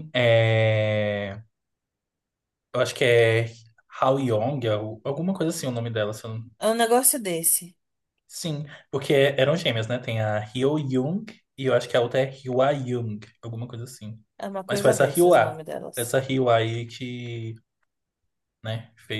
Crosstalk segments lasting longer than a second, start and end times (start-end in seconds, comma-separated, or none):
14.7-16.1